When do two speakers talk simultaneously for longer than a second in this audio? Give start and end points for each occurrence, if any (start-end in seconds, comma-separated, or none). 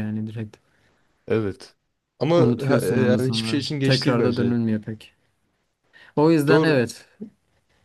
2.4-4.6